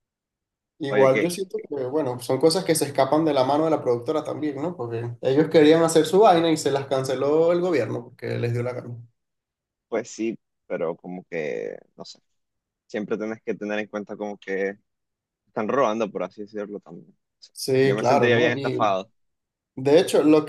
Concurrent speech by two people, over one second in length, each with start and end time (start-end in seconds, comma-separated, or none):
17.5-19.0